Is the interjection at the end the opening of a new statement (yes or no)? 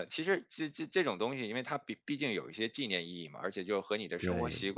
no